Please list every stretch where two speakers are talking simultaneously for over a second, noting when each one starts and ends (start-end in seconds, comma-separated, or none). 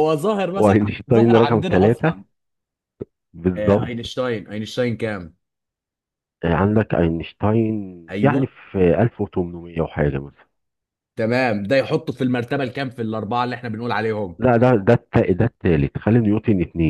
0.6-2.1